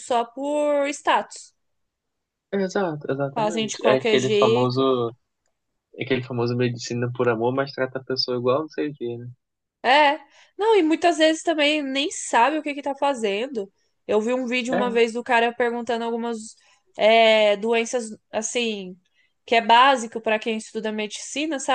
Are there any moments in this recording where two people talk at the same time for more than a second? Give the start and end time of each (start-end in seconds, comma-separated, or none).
3.3-4.8